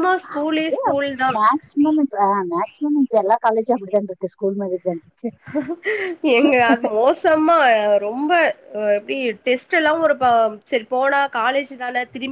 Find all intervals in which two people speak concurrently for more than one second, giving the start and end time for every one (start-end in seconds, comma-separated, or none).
none